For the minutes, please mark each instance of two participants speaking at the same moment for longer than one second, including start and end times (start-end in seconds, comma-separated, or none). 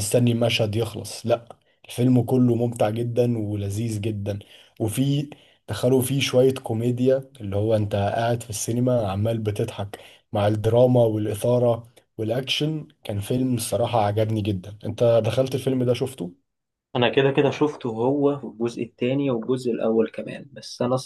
none